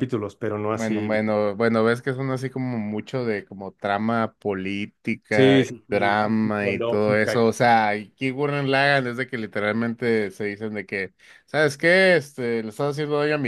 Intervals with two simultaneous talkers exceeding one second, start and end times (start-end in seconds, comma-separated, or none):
5.3-7.4